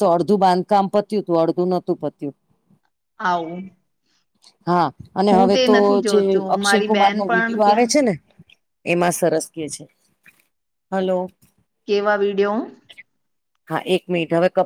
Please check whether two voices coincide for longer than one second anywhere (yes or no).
yes